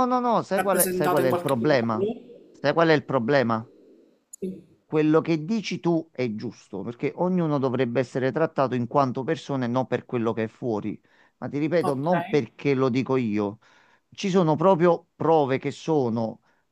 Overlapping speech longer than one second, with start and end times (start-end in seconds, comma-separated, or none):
0.5-1.8